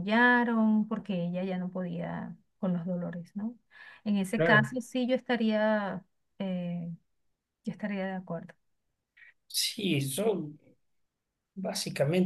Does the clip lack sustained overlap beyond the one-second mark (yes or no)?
yes